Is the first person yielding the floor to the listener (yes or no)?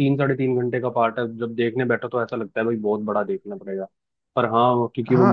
yes